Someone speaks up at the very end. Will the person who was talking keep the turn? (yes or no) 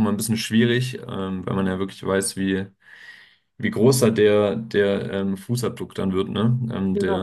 yes